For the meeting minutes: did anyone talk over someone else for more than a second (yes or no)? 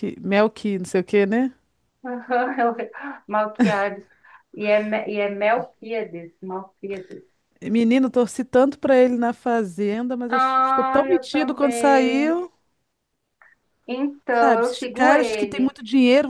yes